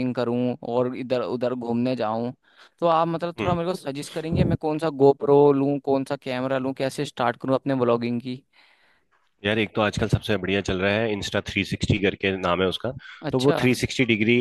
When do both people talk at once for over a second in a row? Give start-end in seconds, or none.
none